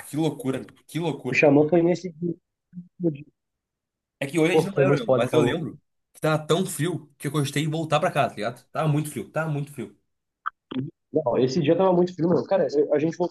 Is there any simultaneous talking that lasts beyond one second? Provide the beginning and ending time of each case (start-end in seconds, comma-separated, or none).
4.5-5.7